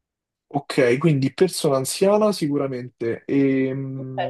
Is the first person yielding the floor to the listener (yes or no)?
yes